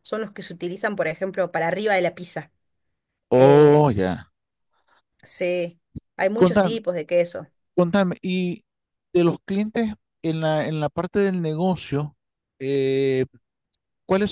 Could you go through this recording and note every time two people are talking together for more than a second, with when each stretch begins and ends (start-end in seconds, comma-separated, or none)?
none